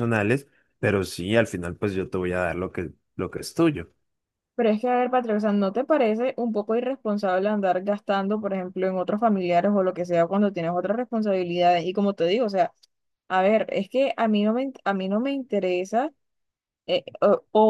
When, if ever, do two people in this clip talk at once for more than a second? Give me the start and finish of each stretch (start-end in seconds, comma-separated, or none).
none